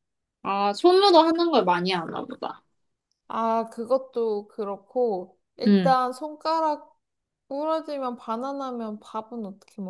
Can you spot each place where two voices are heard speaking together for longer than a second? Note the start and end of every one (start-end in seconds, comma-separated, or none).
none